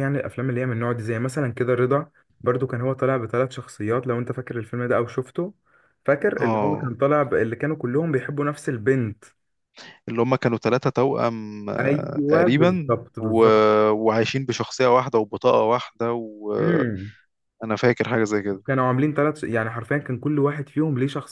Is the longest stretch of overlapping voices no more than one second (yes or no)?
no